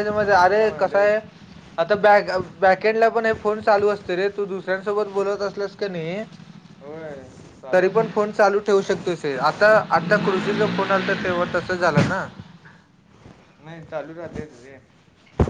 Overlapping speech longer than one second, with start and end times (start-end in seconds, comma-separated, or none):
none